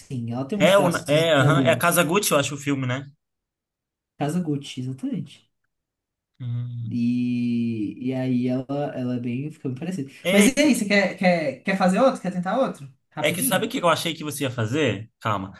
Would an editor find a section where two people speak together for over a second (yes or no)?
yes